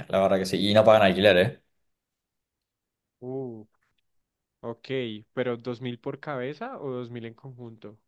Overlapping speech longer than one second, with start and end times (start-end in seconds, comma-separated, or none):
none